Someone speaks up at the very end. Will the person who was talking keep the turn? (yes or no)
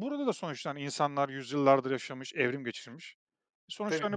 no